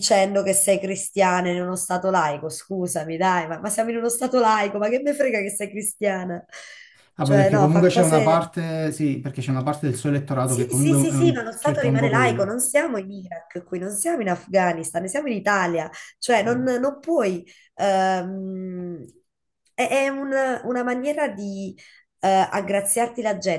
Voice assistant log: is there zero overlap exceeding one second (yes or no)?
no